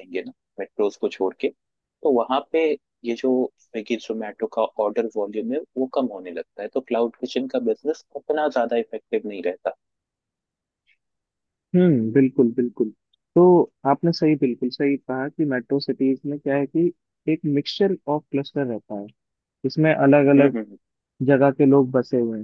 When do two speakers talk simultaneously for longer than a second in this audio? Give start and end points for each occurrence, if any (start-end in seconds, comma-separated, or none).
none